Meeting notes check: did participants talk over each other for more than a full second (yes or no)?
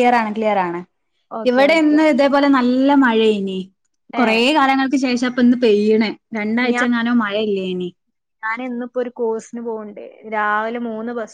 no